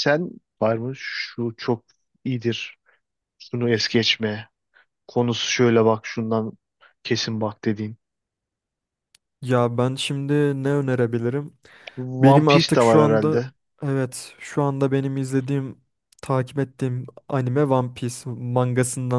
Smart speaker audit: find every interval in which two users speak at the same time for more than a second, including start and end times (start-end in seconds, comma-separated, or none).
12.2-13.4